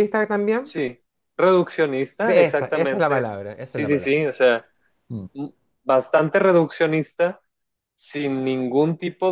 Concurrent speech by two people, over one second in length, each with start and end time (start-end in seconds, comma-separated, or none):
2.2-4.1